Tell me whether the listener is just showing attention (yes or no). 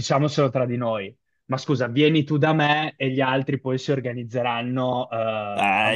no